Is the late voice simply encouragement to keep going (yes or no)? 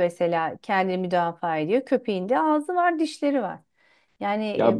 no